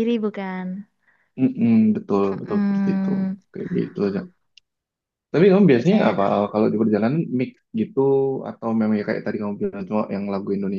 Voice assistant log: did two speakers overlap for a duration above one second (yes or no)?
no